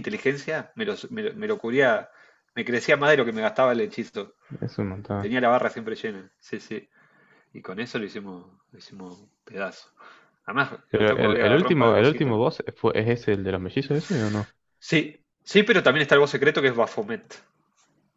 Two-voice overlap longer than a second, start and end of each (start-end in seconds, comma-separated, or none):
10.9-12.3